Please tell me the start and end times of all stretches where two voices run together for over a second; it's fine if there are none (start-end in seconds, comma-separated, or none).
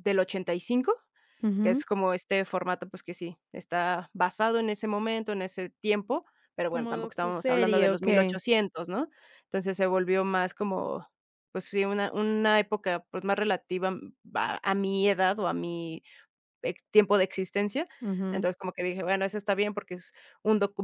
6.7-8.4